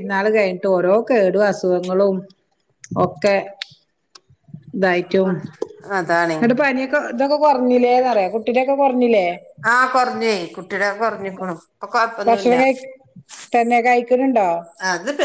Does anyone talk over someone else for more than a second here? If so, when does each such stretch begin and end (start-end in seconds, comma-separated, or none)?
none